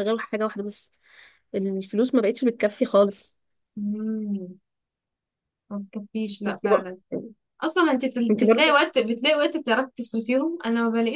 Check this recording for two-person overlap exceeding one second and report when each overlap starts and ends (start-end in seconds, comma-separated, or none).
none